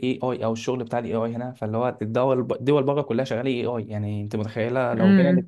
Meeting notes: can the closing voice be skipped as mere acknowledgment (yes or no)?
yes